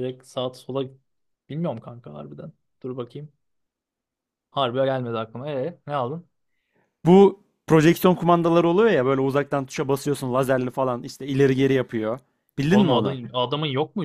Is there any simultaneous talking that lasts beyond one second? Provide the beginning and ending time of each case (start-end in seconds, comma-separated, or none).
none